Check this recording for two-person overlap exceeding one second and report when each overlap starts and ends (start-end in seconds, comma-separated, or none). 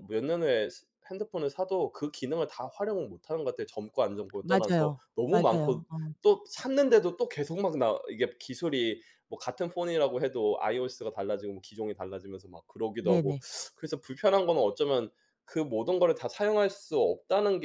4.4-5.8